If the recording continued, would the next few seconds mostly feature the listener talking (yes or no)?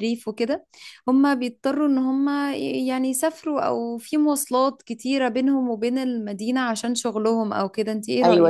yes